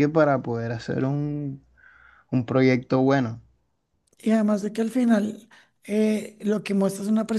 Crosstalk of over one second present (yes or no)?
no